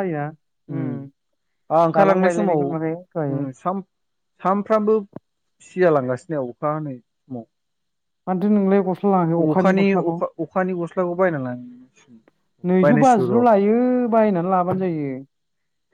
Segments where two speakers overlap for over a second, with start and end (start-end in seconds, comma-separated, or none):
1.9-3.4